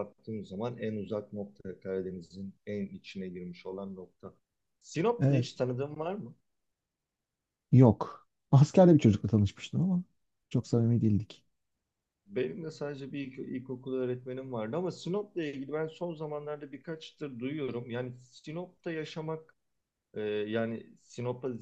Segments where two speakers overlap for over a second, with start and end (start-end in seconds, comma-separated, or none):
none